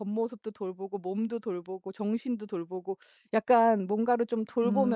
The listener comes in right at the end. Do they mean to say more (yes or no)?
no